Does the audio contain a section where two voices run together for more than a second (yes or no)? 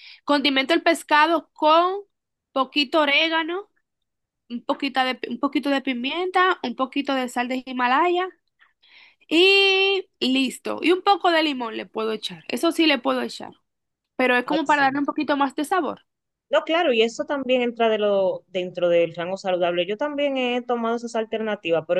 no